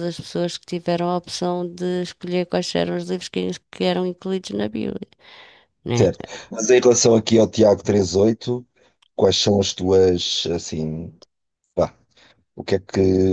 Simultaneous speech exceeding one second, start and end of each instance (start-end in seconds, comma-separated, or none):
none